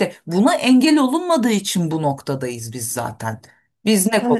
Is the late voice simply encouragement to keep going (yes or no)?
yes